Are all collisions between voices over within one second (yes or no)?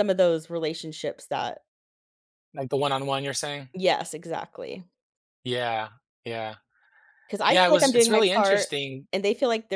no